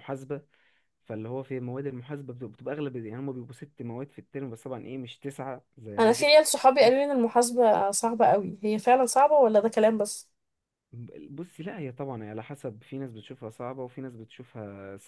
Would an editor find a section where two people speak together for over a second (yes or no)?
no